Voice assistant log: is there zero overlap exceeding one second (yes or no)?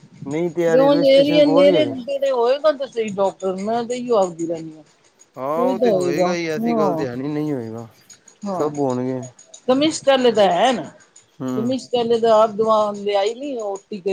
no